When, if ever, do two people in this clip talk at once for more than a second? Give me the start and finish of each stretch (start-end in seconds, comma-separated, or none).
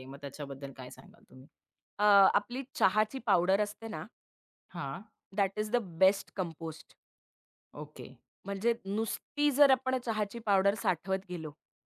none